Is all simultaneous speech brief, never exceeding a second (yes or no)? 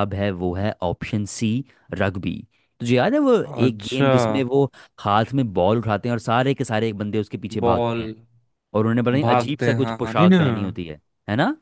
no